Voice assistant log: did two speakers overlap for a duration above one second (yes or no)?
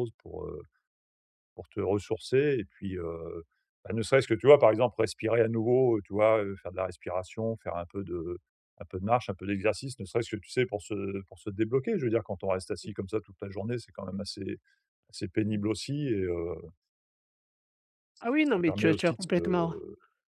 yes